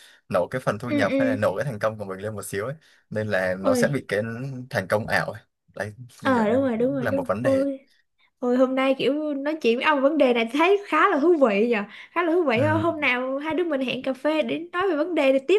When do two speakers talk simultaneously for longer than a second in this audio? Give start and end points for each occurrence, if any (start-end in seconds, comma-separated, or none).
6.2-7.7